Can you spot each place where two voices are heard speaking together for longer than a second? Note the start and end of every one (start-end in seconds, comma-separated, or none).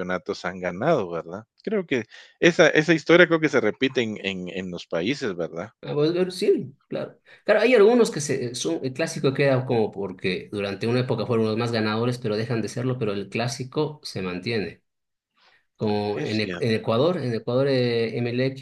none